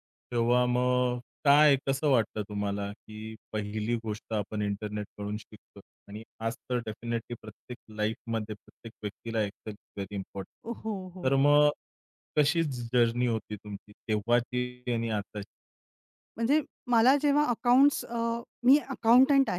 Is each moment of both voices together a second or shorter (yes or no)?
yes